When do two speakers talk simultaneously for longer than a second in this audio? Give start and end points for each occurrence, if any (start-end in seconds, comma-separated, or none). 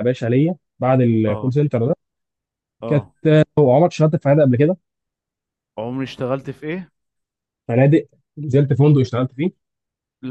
none